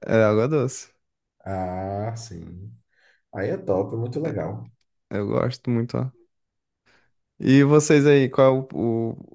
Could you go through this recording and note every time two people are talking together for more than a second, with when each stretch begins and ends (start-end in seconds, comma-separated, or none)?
none